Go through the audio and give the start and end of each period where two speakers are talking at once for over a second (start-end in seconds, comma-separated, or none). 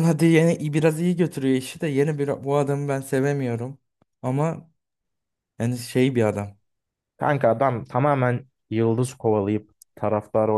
none